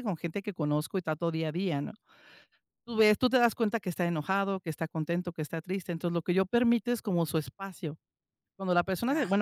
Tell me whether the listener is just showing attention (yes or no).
yes